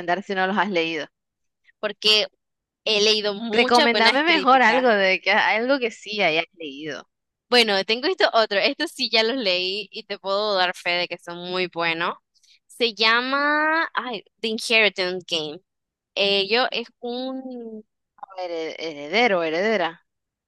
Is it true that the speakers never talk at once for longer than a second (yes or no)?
no